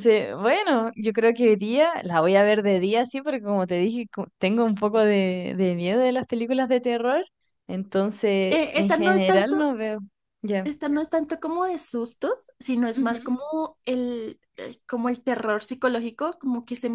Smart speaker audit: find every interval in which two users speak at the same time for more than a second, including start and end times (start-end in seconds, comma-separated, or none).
8.5-9.7